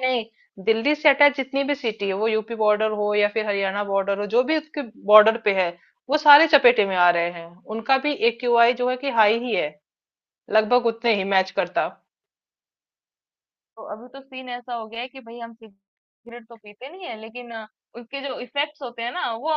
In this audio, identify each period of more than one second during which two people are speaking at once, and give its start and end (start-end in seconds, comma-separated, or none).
none